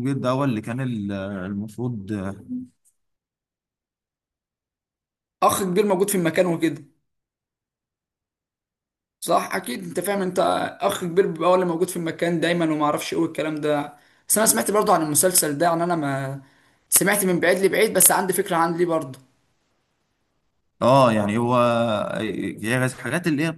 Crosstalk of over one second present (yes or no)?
no